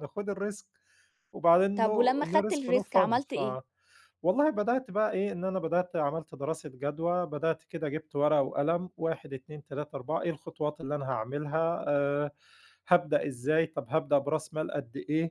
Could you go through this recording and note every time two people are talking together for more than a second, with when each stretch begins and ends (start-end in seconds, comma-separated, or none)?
1.8-3.4